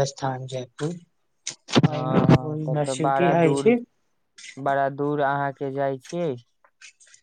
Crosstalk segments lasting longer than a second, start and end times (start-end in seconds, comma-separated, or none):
2.0-3.7